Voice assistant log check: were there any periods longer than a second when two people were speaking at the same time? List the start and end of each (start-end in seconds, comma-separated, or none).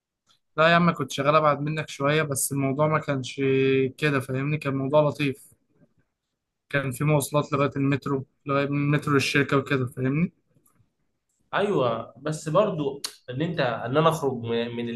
none